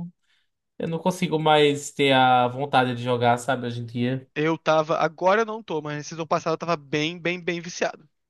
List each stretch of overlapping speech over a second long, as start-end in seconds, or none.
none